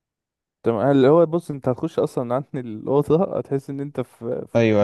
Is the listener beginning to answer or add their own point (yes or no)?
yes